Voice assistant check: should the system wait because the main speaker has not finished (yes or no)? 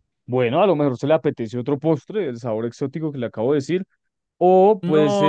no